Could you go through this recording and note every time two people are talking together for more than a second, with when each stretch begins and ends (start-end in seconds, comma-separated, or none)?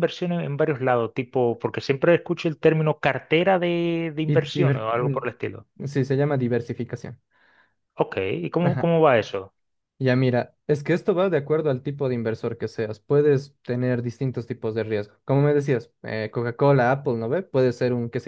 4.3-5.7